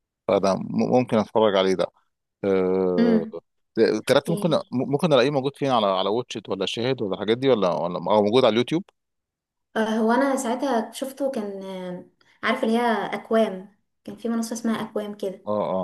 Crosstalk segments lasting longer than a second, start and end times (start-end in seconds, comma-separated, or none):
none